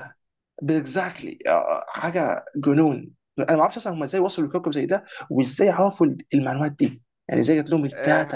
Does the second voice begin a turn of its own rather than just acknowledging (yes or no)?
yes